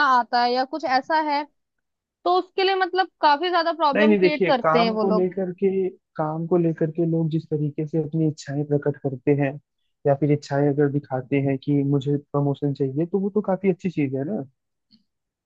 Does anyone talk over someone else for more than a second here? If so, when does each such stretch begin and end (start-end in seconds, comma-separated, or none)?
3.9-5.3